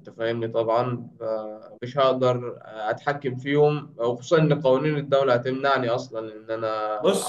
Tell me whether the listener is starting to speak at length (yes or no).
yes